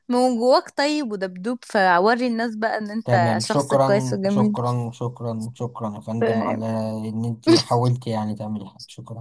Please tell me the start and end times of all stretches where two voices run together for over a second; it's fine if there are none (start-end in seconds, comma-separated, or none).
3.0-4.5